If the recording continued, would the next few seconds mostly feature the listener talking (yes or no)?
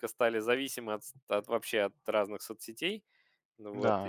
yes